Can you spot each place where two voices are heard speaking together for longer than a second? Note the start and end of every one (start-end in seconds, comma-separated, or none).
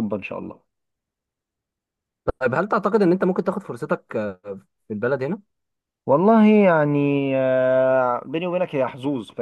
none